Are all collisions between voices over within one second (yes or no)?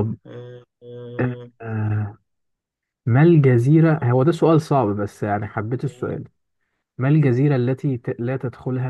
yes